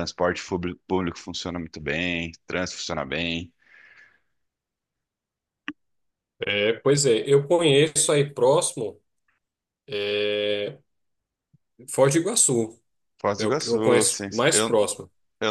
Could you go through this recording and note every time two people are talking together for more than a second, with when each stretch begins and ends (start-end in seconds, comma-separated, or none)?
13.4-14.7